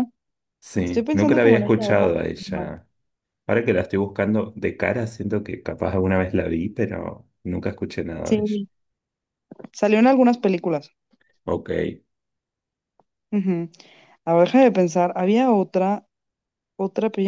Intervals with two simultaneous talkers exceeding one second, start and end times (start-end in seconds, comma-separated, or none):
0.8-2.2